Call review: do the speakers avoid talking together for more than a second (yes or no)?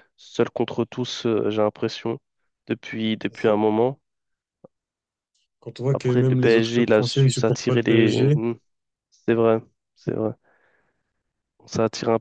no